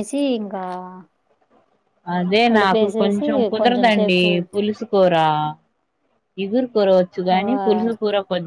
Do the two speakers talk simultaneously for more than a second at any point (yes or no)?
yes